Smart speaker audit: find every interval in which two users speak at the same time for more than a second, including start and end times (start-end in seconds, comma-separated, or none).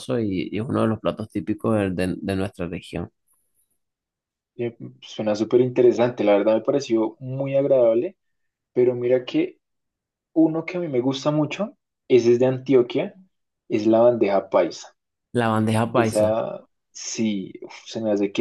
none